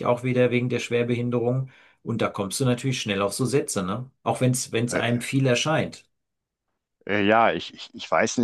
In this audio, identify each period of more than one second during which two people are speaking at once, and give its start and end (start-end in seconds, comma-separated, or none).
none